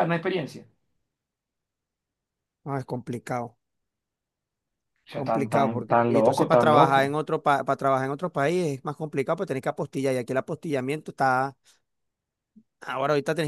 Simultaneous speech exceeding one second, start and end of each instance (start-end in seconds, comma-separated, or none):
5.1-7.2